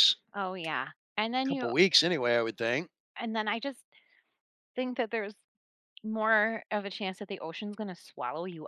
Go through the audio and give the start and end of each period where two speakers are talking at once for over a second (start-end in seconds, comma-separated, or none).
none